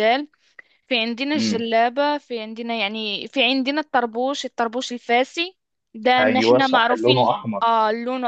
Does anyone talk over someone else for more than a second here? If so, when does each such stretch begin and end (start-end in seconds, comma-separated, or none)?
6.2-7.7